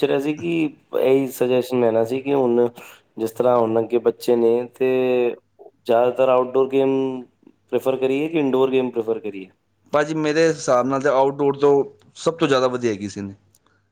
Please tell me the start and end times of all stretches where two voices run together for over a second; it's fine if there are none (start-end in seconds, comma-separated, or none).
none